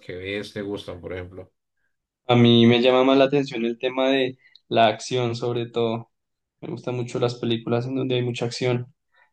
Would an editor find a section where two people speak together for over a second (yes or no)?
no